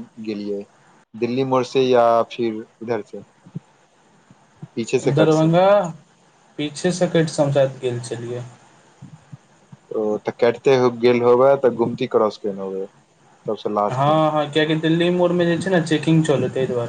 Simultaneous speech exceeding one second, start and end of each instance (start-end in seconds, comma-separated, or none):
none